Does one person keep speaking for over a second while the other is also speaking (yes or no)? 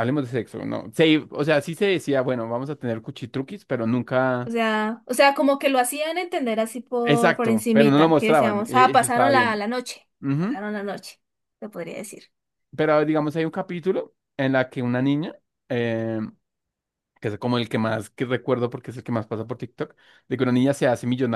yes